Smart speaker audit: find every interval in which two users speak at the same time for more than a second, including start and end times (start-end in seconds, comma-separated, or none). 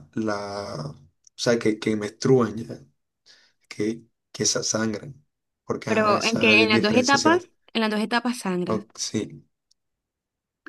5.8-7.4